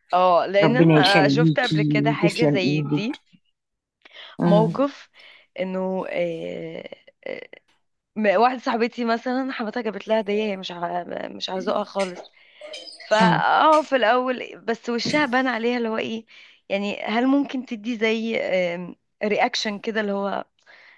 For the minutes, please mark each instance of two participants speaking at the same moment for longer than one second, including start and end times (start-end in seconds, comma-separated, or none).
0.6-3.2